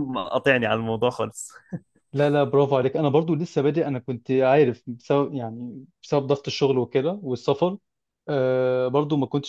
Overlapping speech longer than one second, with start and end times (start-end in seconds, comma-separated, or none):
none